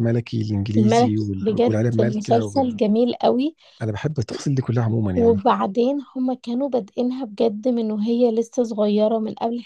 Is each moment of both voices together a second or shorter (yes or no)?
no